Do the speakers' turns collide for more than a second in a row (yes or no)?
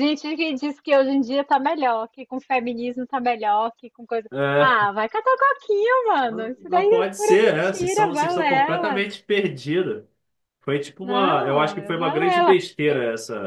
yes